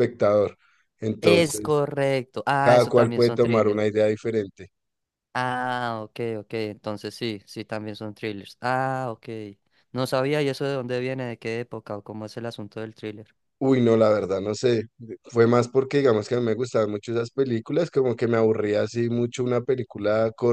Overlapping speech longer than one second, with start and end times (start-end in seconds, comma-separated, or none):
2.6-3.8